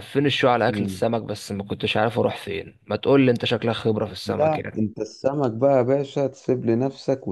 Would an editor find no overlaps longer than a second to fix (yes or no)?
yes